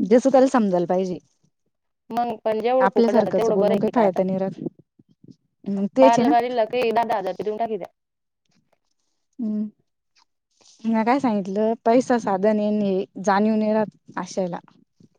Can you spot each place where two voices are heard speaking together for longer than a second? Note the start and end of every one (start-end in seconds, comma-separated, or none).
2.8-4.2